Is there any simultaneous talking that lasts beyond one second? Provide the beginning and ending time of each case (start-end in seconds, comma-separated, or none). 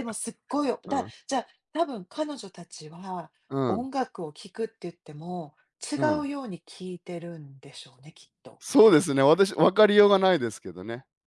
none